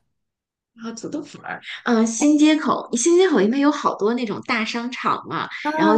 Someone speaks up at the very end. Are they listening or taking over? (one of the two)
taking over